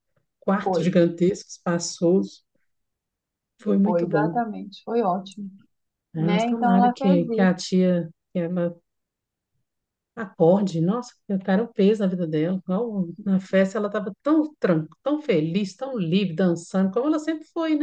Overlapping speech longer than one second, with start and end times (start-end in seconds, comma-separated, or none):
6.2-7.5